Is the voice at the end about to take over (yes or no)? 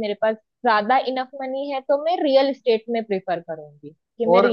yes